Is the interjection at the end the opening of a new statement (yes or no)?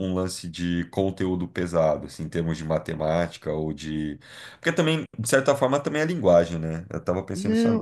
yes